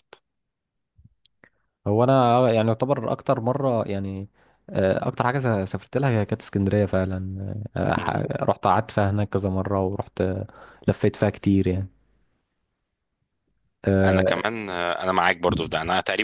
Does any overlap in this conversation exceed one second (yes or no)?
no